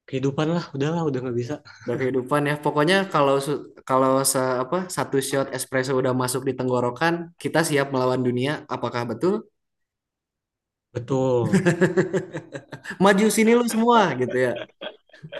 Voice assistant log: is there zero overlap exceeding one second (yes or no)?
yes